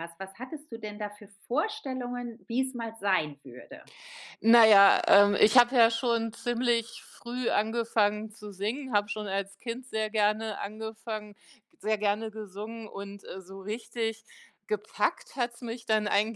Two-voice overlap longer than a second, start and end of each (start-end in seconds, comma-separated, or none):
none